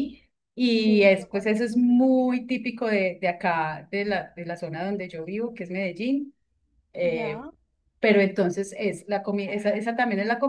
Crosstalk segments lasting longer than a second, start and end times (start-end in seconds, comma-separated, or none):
0.8-2.3